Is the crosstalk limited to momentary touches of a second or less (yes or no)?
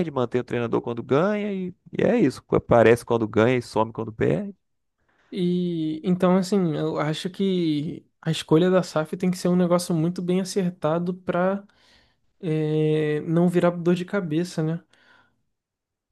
yes